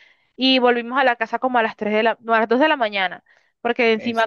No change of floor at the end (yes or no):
yes